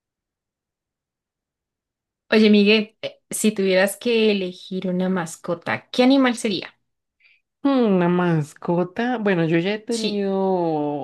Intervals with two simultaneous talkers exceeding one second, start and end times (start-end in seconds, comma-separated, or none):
none